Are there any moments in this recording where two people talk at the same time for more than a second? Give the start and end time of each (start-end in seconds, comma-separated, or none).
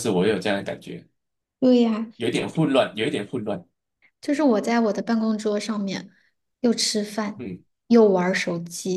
none